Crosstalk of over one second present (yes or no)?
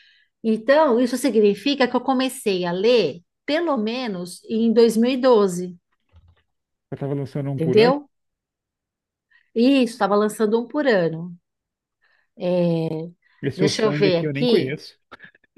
yes